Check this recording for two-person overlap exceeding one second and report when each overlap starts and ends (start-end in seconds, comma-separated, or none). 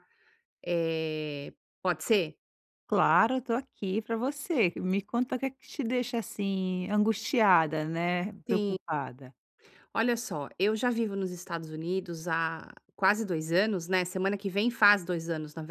none